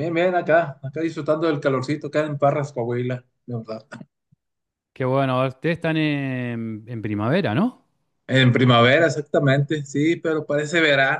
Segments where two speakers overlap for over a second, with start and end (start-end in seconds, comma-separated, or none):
none